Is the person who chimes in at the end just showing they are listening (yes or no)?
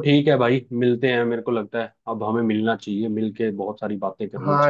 no